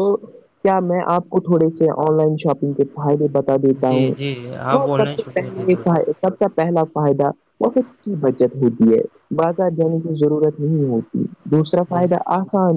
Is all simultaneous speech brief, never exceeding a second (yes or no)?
no